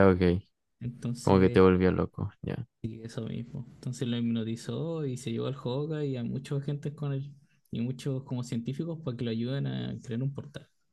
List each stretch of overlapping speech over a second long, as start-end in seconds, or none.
none